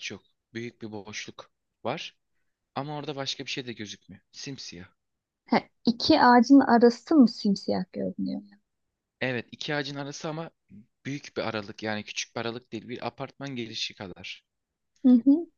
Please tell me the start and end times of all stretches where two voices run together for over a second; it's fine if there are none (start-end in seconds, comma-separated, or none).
none